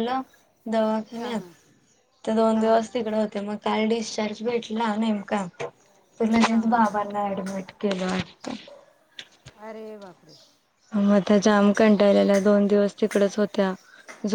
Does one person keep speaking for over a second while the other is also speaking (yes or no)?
no